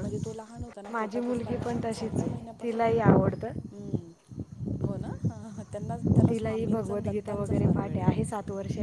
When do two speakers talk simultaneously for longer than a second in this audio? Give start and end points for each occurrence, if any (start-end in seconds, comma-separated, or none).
0.9-2.9, 6.3-8.1